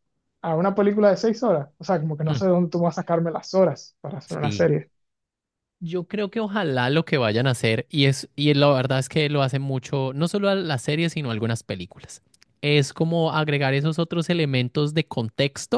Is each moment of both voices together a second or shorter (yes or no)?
yes